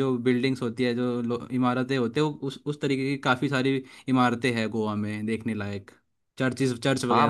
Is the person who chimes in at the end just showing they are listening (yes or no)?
no